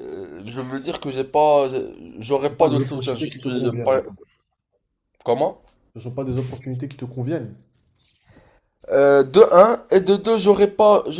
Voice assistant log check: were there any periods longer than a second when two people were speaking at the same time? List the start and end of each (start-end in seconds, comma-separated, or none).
2.6-4.0